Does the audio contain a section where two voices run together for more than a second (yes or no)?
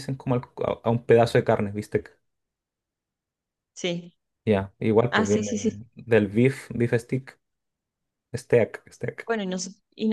no